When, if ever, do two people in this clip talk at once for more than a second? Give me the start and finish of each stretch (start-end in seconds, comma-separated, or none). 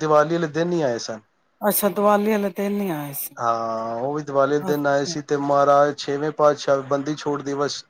none